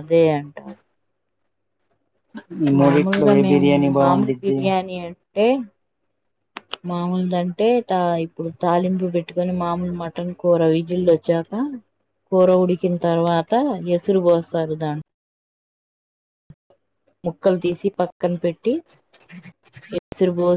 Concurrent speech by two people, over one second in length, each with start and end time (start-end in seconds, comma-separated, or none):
2.8-4.6